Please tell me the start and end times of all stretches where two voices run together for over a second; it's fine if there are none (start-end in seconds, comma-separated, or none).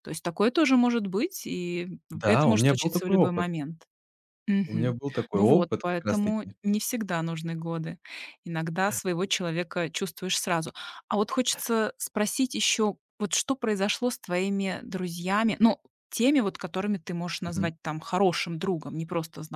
2.2-3.5, 4.7-6.6